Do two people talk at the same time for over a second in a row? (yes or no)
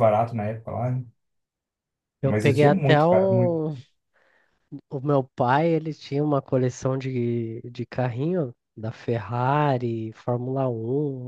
yes